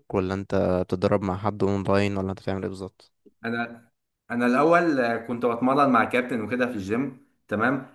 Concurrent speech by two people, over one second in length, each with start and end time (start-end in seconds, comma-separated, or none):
none